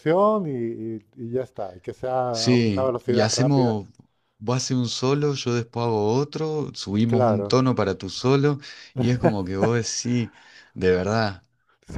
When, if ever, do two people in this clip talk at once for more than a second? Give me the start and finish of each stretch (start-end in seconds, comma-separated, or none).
2.3-3.8